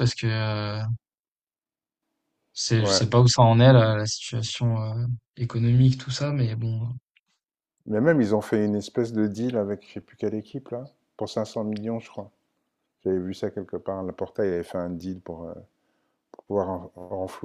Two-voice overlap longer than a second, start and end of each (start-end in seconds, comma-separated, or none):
none